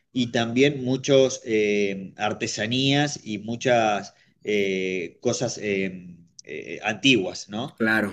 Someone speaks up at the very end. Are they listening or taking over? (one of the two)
listening